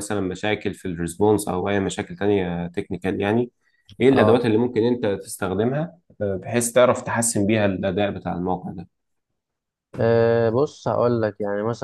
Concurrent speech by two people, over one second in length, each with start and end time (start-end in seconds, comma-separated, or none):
none